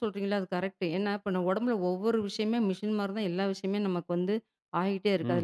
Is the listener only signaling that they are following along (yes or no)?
yes